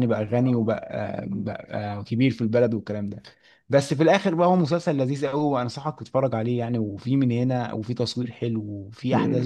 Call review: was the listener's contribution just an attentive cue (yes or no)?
no